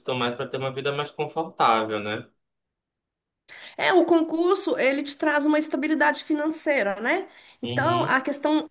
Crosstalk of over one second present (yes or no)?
no